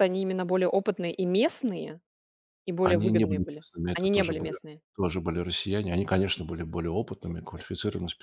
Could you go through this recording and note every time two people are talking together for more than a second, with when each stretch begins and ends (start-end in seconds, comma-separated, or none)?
2.8-4.5